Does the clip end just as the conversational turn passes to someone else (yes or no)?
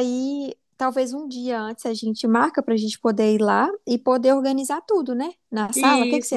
yes